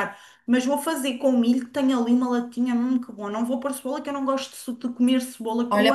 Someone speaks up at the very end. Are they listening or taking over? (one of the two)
taking over